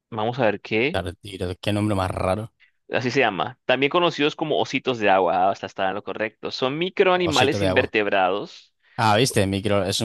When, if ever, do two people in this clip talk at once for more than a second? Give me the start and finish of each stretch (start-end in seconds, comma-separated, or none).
none